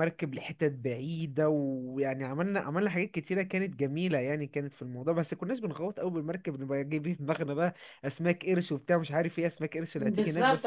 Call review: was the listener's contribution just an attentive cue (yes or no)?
no